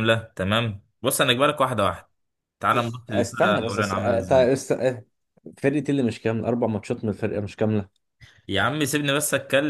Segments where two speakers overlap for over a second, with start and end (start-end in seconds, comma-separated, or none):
3.1-4.5